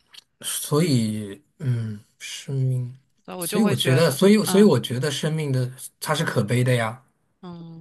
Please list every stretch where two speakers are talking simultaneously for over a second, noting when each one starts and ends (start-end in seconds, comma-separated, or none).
3.4-4.7